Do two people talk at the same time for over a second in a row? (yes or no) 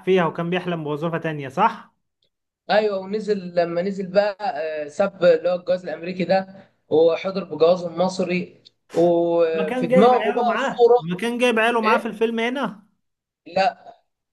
yes